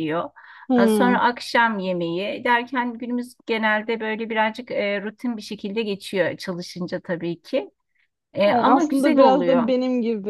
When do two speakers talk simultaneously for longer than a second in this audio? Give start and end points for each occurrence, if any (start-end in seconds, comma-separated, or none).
8.4-9.7